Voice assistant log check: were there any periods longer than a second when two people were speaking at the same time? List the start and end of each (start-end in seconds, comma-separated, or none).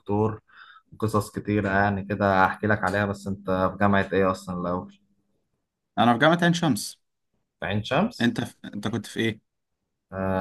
none